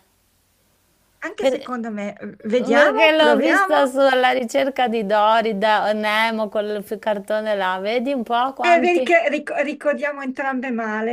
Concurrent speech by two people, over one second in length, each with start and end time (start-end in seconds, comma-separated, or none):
2.6-3.9